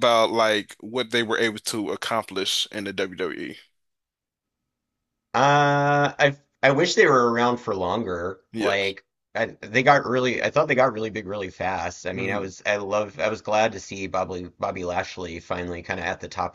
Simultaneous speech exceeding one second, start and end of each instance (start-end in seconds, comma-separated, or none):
none